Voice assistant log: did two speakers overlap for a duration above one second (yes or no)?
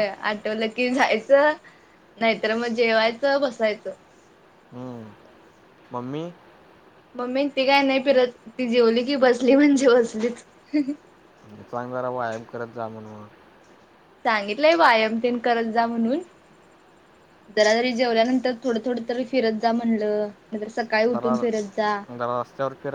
no